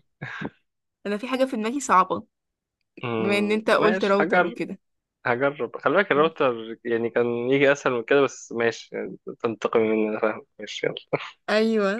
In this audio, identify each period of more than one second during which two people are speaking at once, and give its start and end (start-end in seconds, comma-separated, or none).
3.2-4.5